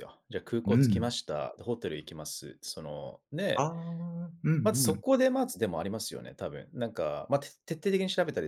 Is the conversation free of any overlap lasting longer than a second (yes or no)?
yes